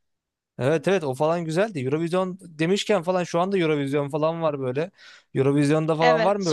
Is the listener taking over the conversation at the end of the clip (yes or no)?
no